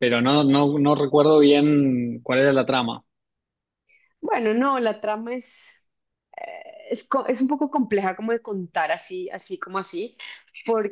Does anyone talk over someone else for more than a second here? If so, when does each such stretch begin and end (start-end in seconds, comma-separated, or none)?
none